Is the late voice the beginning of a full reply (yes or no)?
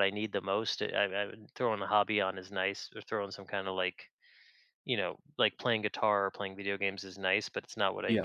no